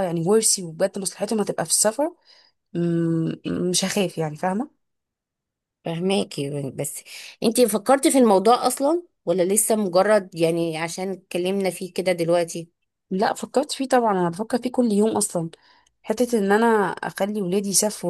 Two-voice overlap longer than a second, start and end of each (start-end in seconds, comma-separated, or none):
none